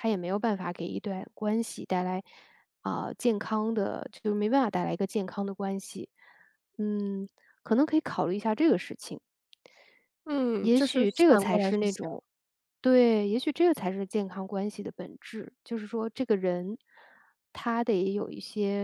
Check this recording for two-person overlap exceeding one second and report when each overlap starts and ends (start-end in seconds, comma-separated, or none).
10.6-12.0